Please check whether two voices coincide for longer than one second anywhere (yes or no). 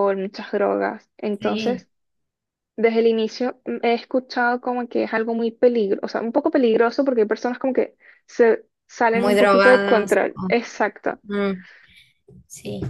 yes